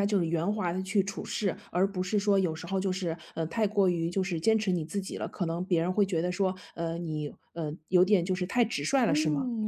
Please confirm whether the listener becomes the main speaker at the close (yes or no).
yes